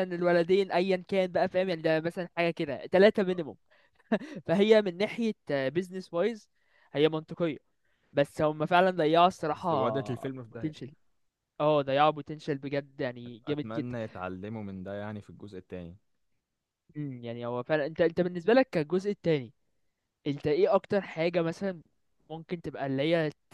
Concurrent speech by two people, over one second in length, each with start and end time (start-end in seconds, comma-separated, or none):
9.5-10.7